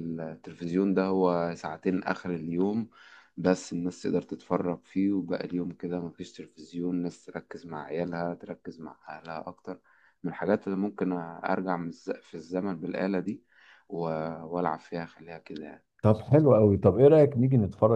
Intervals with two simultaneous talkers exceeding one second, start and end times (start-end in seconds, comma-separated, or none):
none